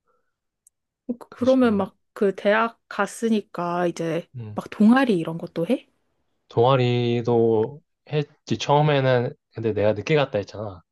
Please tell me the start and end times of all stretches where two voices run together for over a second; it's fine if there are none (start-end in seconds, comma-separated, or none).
none